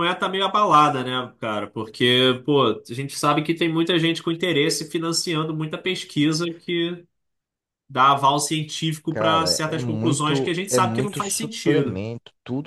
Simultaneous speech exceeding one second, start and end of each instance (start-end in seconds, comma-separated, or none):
9.1-12.0